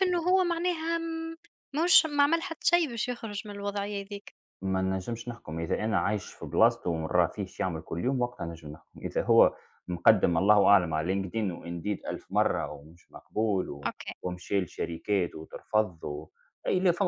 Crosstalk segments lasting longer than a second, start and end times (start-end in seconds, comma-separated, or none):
none